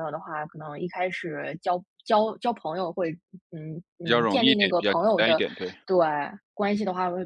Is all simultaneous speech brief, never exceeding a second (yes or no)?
no